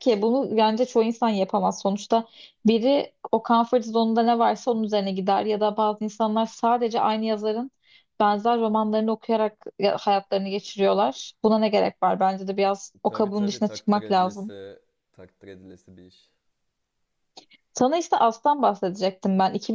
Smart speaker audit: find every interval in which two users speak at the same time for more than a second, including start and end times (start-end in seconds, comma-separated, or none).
13.1-14.5